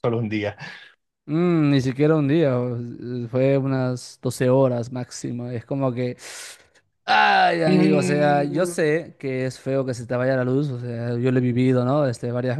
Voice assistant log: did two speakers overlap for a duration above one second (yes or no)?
yes